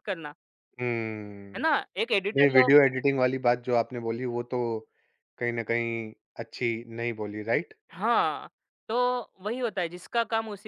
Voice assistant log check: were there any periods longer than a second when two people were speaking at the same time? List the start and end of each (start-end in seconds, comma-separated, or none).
none